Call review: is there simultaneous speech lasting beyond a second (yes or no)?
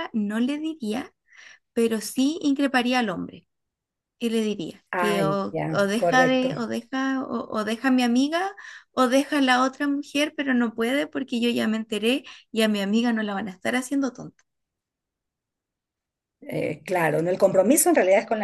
yes